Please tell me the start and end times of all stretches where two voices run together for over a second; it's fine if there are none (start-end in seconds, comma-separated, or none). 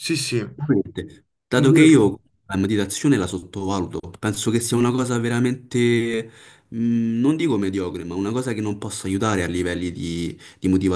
0.5-2.2